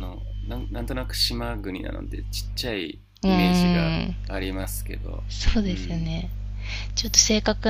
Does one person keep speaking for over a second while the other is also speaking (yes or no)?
no